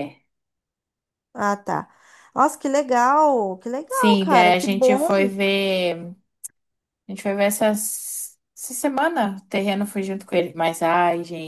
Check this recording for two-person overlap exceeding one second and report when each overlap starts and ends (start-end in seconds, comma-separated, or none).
3.9-5.1